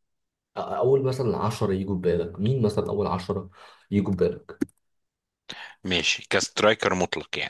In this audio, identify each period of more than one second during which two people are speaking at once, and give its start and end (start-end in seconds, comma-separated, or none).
none